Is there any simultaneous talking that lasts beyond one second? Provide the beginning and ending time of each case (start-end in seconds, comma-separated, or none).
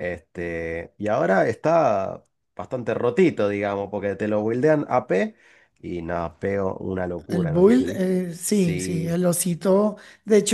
7.3-9.2